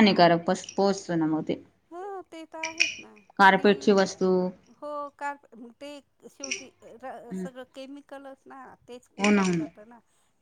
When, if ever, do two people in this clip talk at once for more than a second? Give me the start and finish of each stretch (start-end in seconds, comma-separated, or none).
none